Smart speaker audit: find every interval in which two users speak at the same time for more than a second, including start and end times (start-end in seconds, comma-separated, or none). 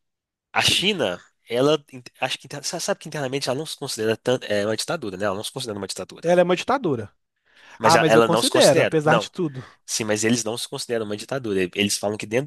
7.8-9.3